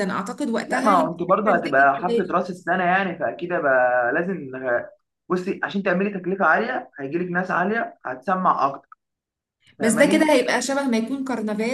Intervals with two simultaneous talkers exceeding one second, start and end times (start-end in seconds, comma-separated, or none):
0.7-2.4